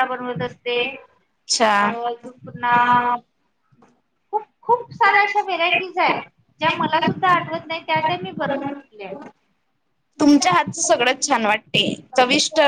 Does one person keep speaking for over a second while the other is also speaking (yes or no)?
yes